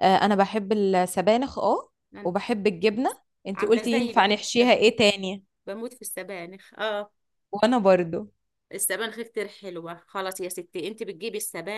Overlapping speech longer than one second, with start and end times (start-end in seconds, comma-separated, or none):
3.5-4.9